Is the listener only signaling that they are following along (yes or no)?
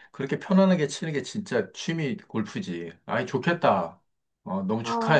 no